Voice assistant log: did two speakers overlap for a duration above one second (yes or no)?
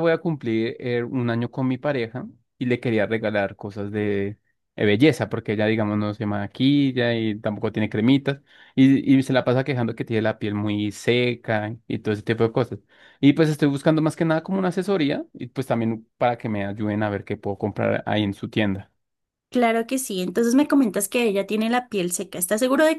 no